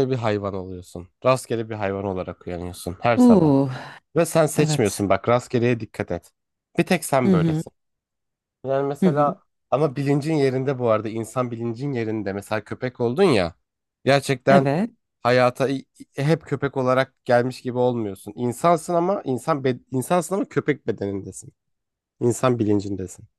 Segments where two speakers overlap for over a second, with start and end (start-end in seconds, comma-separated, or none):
none